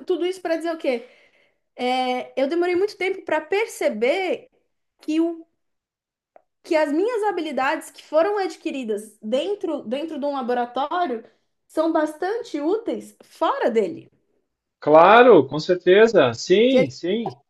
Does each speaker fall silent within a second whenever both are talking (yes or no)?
yes